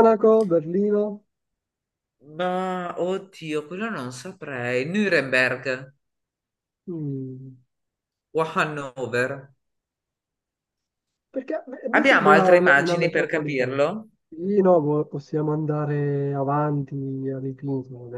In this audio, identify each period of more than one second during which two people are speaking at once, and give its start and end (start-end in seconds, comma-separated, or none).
11.9-13.8